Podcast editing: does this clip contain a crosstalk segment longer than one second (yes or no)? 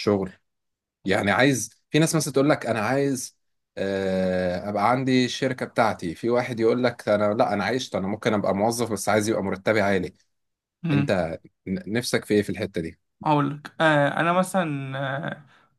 no